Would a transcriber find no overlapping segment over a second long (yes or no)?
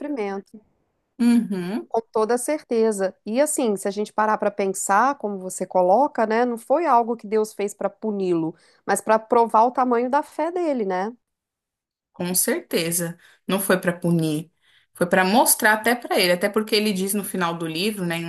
yes